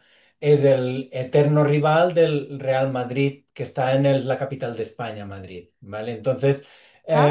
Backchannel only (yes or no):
yes